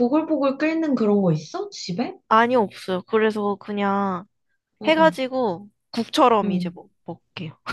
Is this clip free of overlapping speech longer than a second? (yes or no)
yes